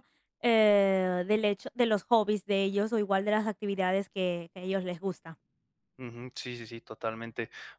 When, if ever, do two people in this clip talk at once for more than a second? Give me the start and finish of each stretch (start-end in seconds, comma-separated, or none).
none